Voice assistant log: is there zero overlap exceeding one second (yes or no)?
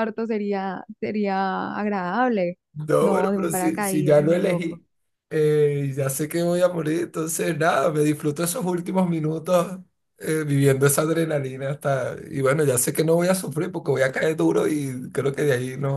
no